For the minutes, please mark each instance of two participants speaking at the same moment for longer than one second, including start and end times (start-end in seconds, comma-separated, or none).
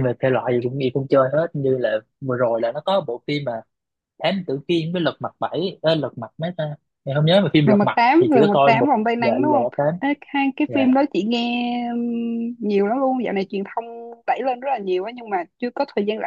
7.6-9.9